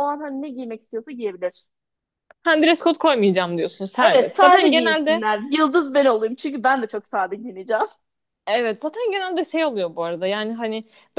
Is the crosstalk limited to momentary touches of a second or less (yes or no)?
no